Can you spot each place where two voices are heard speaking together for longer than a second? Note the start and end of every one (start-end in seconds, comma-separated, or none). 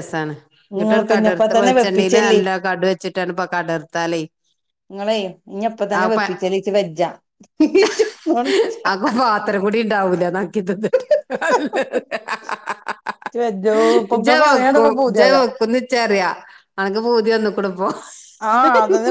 0.8-2.4